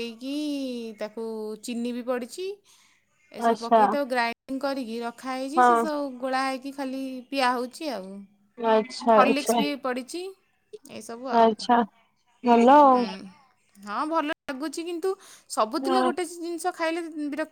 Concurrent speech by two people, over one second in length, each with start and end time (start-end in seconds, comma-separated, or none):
none